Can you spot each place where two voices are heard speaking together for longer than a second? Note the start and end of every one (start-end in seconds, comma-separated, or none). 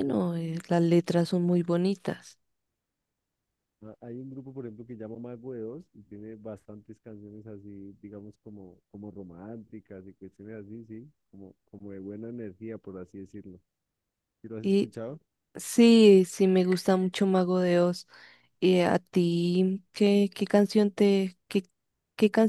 none